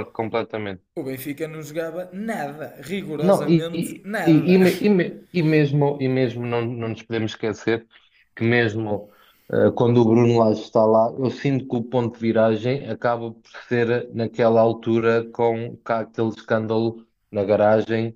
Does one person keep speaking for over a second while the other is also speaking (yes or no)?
yes